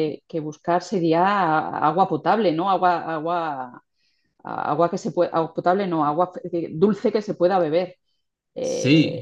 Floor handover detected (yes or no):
yes